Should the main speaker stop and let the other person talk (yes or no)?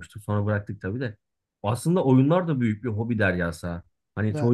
no